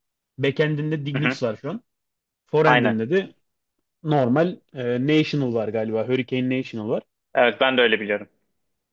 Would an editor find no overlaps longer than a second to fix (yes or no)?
yes